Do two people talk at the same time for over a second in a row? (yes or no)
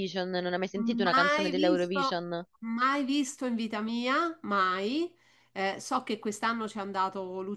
yes